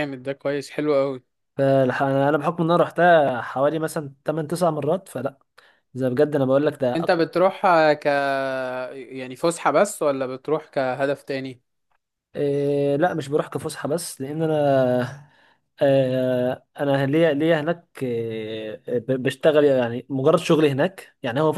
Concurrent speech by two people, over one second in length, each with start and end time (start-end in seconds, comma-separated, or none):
none